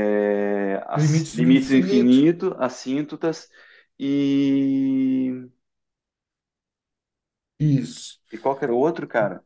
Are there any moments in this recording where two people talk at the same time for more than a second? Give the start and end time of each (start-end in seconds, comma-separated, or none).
0.9-2.3